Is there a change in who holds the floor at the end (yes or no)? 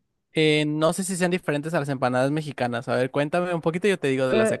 yes